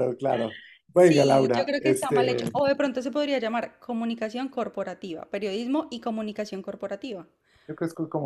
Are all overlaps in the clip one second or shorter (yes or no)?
no